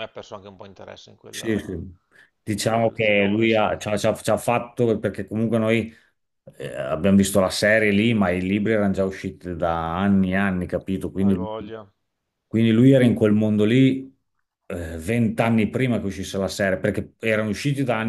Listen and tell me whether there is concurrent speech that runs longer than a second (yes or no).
yes